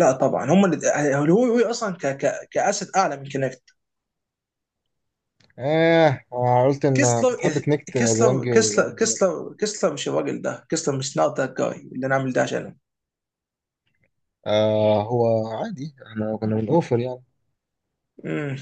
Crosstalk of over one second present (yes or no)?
yes